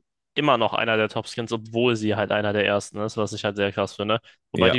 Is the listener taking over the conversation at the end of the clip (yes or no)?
no